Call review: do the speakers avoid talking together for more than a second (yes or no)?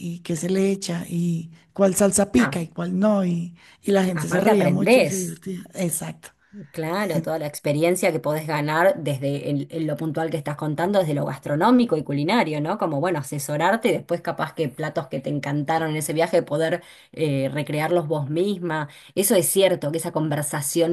no